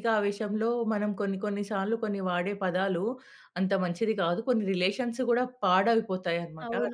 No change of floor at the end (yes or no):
no